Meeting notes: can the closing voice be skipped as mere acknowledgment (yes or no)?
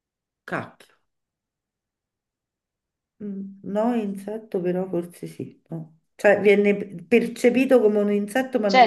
no